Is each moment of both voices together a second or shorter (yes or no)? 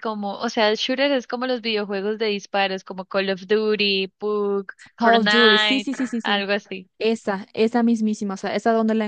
no